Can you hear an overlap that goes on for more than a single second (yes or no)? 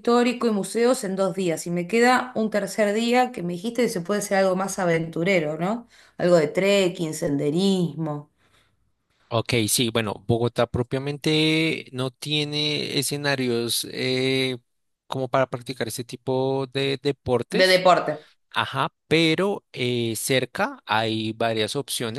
no